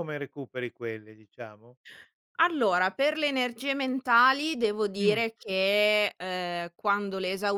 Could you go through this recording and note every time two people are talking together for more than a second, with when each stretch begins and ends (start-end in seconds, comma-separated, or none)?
none